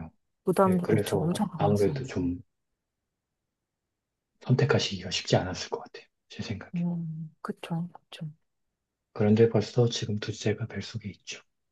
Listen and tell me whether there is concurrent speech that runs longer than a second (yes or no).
yes